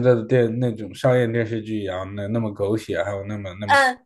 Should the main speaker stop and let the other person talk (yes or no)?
yes